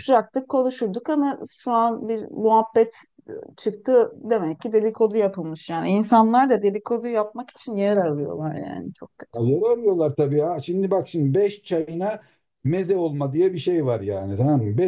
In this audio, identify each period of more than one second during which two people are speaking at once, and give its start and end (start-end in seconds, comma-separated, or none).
none